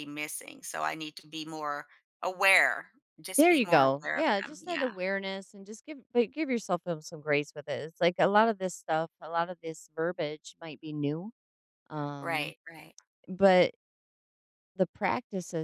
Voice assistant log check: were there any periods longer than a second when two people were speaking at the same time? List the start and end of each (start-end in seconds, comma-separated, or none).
3.4-4.9